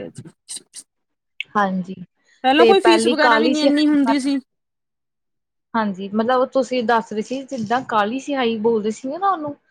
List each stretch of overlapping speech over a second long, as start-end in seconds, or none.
2.6-4.3